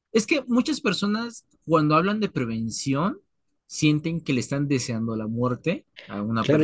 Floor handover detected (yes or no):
yes